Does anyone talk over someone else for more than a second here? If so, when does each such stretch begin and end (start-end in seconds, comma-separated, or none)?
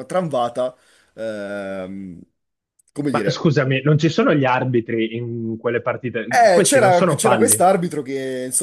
6.3-7.6